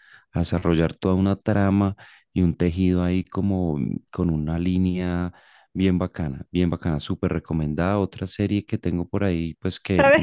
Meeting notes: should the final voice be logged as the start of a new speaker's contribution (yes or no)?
yes